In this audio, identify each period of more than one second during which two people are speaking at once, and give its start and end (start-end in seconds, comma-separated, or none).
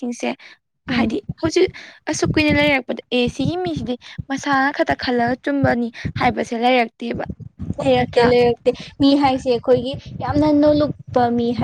none